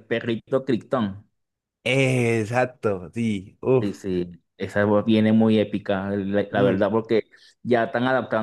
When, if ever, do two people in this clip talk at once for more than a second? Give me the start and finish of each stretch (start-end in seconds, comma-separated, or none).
none